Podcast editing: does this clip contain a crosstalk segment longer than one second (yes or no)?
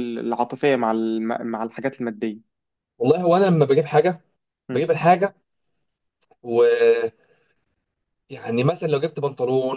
no